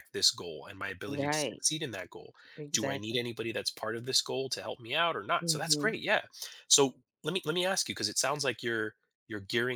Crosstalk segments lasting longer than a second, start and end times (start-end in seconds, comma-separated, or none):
none